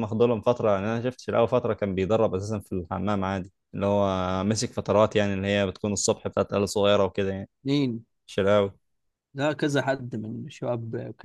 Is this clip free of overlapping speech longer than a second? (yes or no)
yes